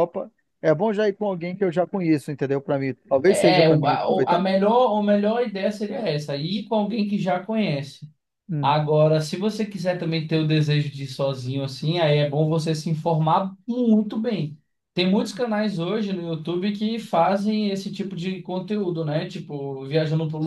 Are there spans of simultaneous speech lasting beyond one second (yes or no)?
yes